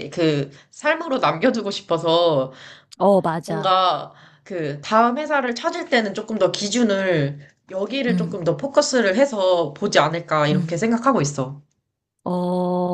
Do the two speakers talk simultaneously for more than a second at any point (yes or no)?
no